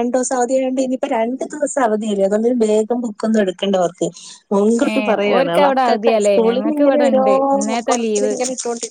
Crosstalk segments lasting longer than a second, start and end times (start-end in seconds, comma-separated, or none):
4.9-7.2